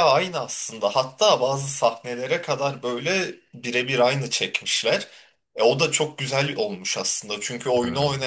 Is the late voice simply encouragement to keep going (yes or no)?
yes